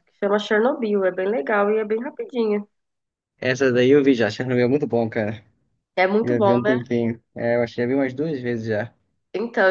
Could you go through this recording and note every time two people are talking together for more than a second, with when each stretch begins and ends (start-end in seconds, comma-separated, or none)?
none